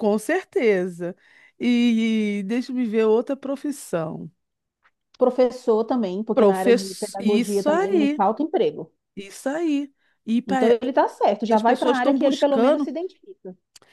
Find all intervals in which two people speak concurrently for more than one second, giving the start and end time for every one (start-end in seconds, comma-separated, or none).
6.3-8.2, 11.5-12.9